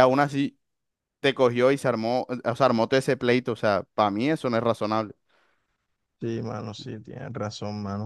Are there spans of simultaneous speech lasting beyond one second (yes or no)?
no